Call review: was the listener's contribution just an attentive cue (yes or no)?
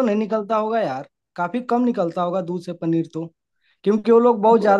yes